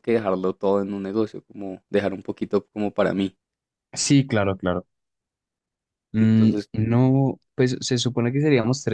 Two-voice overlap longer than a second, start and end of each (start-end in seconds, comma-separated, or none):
none